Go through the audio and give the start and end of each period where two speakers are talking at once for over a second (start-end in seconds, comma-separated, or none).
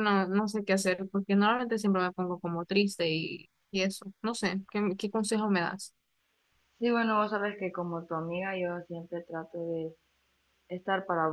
none